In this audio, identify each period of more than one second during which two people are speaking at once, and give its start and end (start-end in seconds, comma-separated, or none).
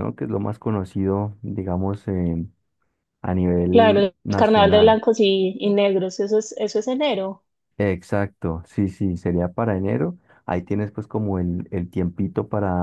3.7-5.0